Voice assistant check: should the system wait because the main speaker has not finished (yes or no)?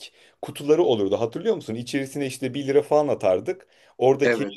yes